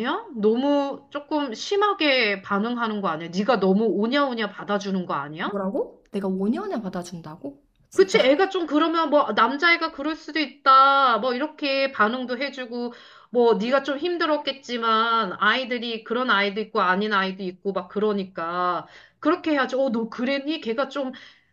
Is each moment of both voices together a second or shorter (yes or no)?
yes